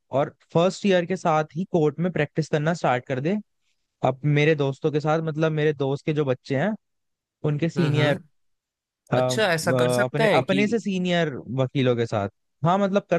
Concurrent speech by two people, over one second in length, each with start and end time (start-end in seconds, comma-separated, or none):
9.2-10.6